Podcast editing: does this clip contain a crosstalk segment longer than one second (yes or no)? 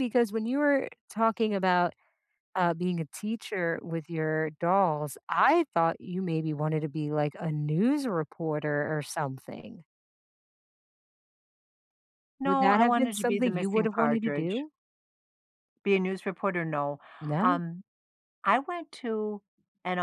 yes